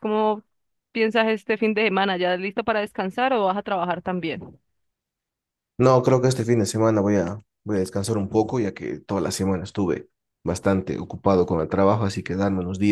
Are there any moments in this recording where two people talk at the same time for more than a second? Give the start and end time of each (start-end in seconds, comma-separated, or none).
none